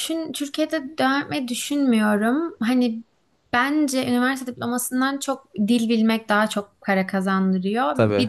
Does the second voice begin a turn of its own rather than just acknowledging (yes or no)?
no